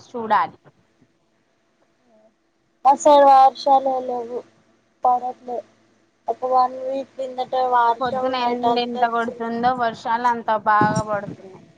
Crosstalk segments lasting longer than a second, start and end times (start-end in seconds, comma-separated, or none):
8.0-9.5